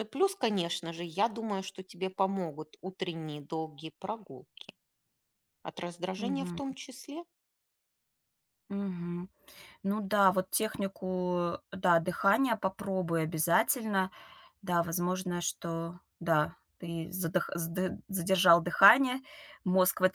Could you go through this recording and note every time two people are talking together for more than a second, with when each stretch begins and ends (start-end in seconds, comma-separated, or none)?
none